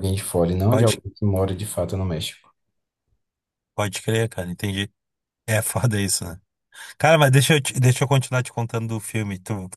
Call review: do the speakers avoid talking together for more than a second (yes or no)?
yes